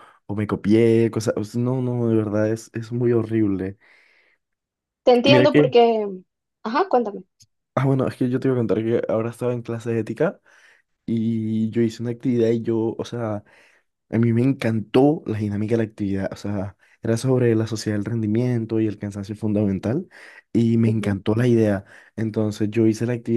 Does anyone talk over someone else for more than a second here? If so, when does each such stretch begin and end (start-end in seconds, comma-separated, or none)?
none